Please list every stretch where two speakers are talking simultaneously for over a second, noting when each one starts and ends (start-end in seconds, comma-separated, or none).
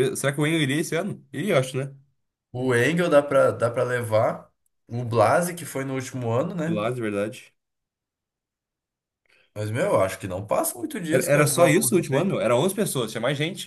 11.1-12.3